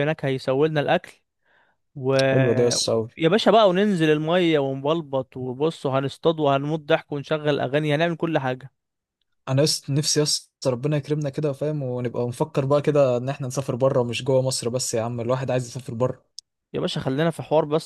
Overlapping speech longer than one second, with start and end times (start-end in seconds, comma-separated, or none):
none